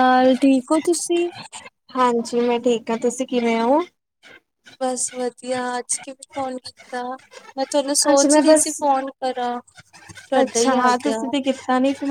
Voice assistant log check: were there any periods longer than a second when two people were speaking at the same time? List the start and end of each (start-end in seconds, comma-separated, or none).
none